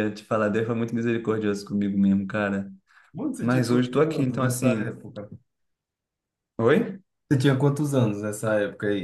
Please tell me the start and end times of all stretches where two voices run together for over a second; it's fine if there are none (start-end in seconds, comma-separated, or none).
3.4-4.9